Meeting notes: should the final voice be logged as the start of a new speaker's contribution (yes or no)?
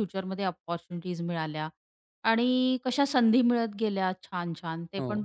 no